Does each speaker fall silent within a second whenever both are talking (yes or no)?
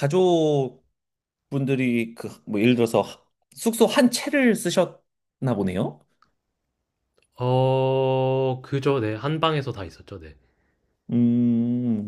yes